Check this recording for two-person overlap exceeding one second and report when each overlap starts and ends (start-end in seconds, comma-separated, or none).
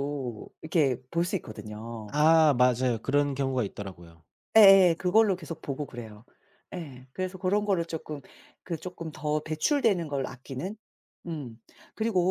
none